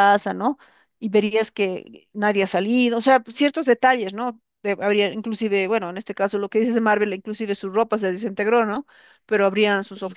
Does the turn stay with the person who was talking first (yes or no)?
yes